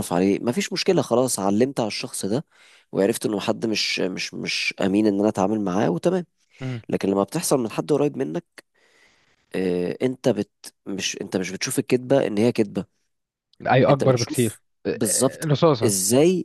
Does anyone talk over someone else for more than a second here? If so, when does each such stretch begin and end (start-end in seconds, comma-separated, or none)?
13.9-15.9